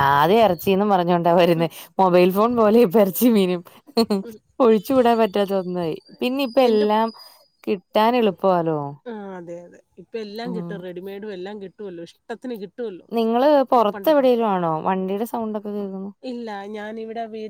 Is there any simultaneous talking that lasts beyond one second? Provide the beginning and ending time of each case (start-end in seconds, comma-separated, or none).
none